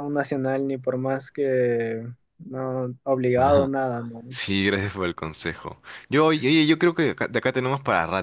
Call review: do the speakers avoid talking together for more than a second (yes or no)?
yes